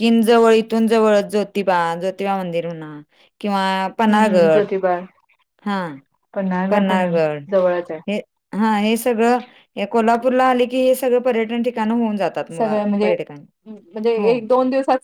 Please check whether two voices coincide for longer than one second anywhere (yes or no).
no